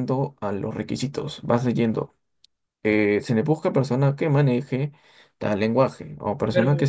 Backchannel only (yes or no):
yes